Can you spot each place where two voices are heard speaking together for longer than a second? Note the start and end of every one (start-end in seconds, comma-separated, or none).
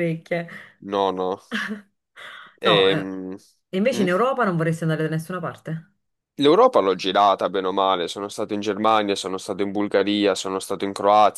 none